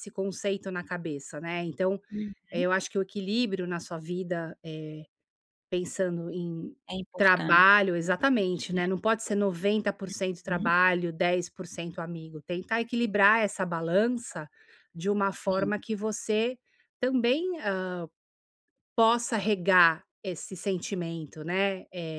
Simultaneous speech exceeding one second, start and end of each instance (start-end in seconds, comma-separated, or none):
7.2-8.8